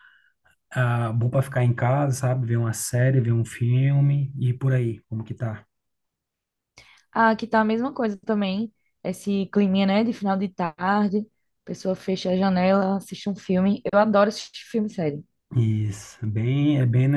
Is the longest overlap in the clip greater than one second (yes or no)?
no